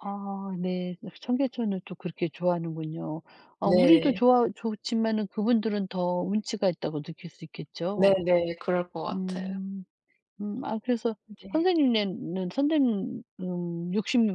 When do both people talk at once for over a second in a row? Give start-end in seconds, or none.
none